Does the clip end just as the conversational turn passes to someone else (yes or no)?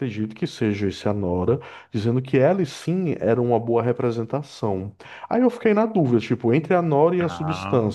no